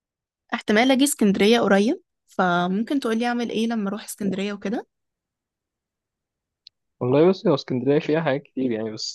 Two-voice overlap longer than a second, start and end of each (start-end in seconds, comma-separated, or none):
none